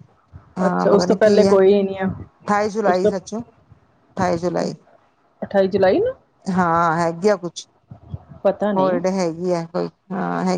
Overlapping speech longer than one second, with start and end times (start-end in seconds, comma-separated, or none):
0.7-2.1